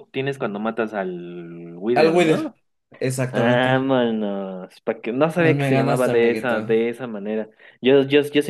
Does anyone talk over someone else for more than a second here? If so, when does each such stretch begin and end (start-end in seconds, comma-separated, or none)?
5.3-6.5